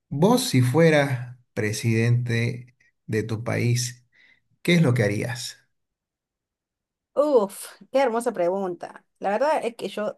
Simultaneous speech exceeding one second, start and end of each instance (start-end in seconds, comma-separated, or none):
none